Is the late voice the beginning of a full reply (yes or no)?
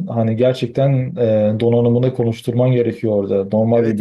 no